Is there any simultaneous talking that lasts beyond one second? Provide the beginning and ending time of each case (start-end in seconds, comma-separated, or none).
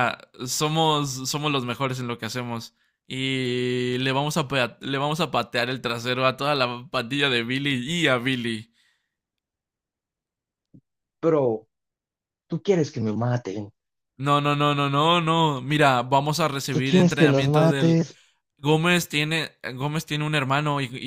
16.7-18.0